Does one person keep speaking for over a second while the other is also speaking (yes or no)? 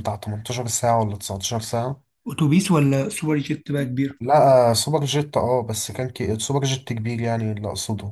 no